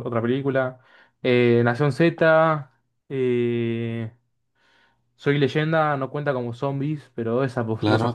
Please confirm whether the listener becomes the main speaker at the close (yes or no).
yes